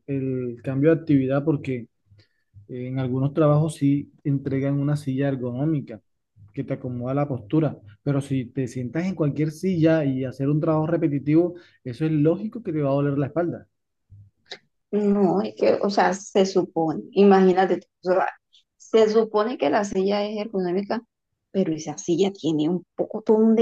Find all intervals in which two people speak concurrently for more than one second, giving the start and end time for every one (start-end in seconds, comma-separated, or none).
none